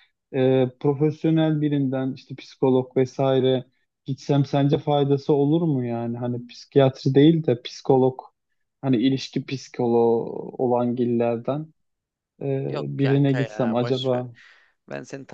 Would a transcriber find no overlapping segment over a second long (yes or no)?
no